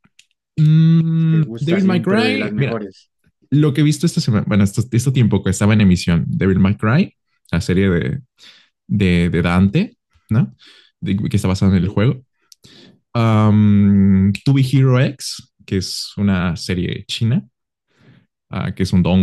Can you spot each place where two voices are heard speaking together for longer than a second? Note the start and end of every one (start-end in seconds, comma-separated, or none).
1.3-2.8